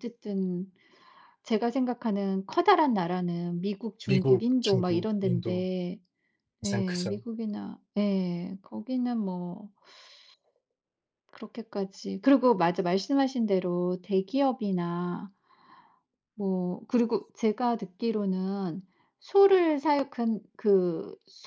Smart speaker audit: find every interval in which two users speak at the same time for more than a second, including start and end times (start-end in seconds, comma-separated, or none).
4.0-5.7